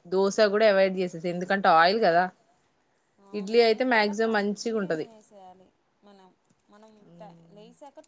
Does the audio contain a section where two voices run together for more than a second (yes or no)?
yes